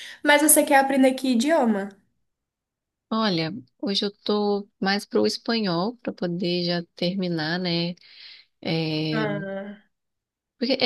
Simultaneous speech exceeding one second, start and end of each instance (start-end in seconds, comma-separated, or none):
none